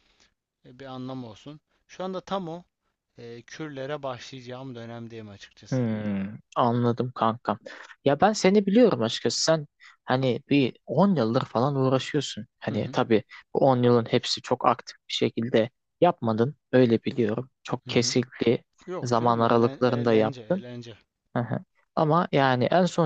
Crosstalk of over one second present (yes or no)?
yes